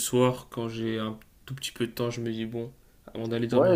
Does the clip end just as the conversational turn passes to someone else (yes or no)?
yes